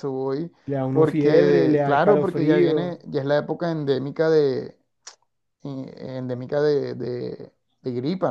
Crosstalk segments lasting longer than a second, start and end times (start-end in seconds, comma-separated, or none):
0.9-3.0